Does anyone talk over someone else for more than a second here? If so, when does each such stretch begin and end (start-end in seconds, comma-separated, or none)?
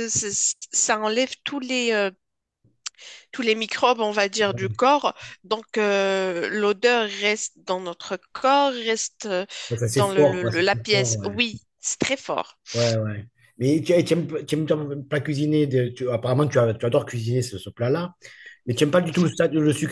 9.8-11.4